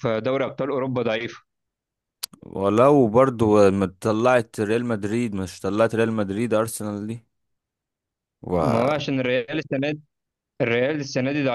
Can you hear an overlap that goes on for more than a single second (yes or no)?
no